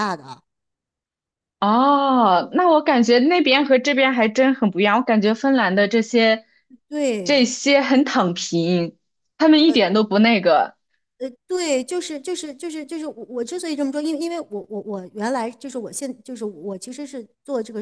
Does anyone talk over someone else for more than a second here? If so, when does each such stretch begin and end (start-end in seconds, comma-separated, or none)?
none